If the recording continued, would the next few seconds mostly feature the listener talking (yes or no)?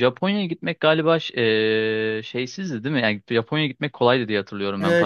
yes